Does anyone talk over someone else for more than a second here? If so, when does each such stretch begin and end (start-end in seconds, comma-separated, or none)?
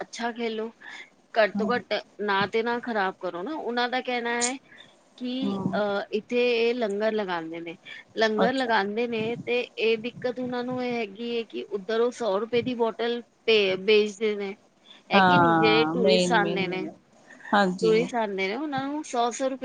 15.2-16.9